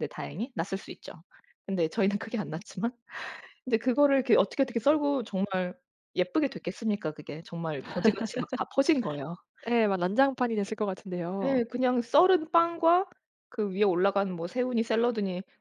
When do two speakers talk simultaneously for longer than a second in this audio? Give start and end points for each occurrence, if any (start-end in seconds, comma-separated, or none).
none